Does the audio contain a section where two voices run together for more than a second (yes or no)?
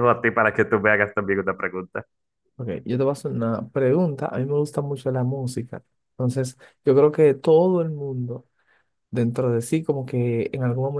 no